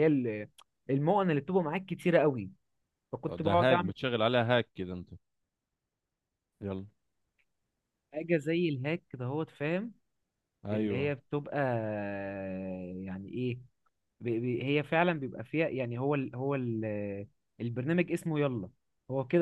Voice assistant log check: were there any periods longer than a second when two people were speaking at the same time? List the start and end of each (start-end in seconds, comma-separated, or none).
none